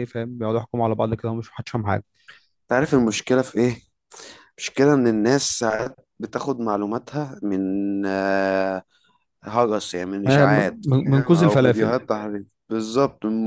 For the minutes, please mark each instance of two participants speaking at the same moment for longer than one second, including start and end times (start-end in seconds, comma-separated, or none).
10.3-11.9